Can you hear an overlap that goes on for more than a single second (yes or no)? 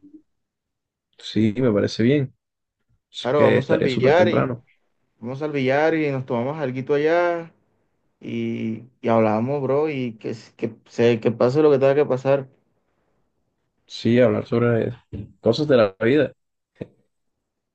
yes